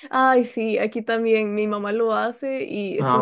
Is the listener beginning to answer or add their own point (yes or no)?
no